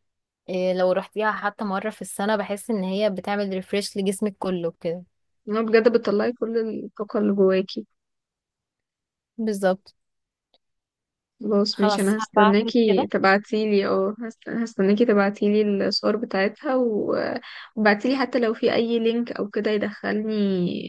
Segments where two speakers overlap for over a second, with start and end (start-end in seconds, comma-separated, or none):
11.7-13.1